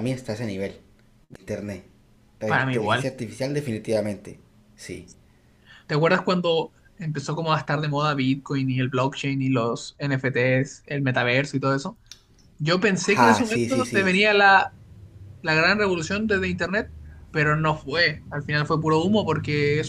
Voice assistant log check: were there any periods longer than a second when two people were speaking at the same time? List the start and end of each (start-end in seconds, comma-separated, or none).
13.0-14.2